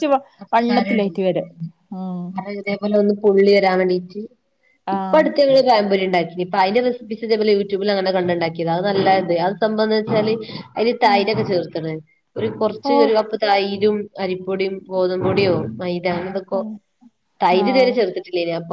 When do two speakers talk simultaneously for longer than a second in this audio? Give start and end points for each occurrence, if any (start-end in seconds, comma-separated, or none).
none